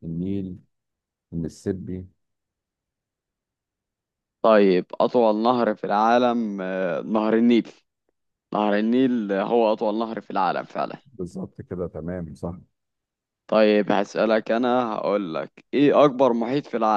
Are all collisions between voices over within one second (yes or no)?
yes